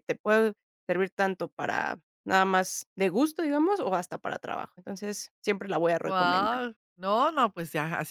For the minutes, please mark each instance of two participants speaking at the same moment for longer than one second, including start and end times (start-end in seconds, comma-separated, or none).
none